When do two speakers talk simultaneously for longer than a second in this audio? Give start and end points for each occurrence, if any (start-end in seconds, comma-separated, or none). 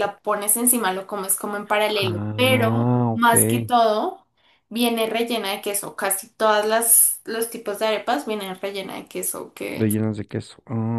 1.9-3.3